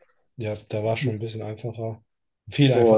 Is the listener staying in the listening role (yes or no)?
no